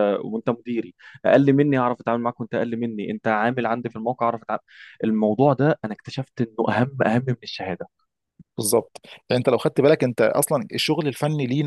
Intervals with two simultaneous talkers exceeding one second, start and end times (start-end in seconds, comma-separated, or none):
none